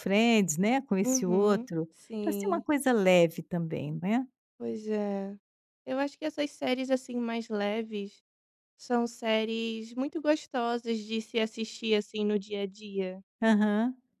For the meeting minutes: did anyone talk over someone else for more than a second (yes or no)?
yes